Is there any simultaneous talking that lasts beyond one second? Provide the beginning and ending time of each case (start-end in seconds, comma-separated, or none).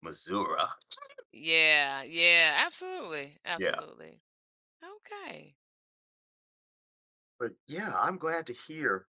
none